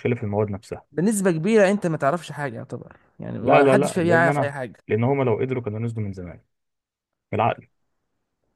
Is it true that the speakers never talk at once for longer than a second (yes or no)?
no